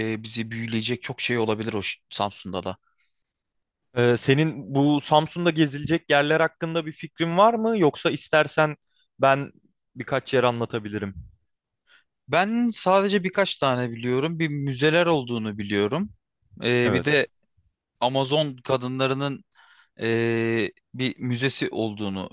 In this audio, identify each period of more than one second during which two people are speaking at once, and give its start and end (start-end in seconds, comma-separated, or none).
none